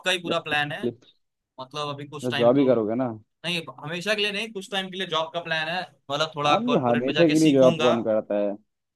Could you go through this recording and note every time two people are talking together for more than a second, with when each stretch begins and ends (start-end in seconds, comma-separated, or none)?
6.5-7.9